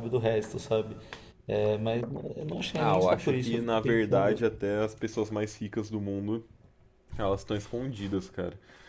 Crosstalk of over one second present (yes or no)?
yes